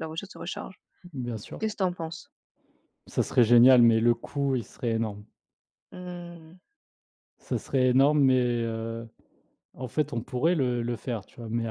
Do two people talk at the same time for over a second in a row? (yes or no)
no